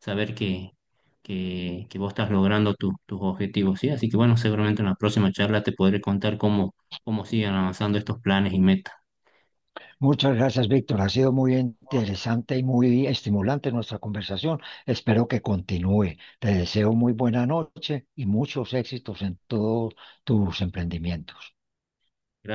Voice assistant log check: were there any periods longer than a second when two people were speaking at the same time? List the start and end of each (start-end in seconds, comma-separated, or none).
none